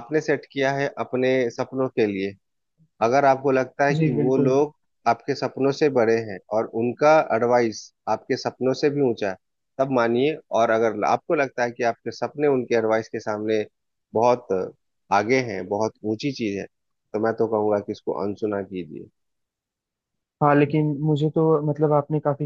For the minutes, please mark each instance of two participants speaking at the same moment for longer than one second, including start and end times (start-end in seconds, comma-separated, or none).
none